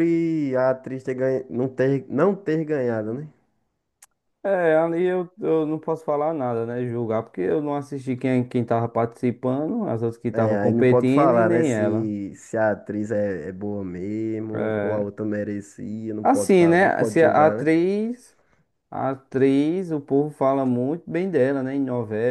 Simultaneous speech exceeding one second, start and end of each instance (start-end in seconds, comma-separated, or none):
10.3-12.1, 16.2-17.7